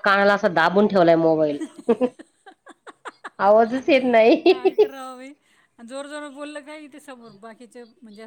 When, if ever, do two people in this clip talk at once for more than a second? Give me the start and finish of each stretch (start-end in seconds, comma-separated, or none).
none